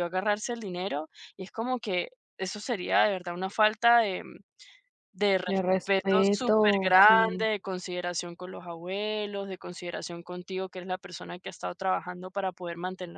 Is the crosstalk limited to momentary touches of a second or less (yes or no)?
no